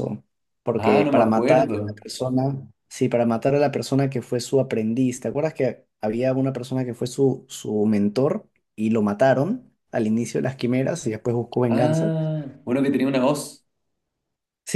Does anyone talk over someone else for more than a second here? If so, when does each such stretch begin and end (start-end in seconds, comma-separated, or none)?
0.8-2.0